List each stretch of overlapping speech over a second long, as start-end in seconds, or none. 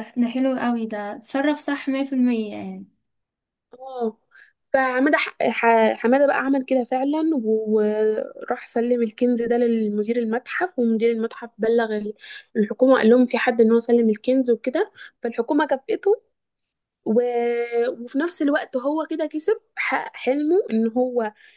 none